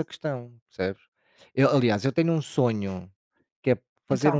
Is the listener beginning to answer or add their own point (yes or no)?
no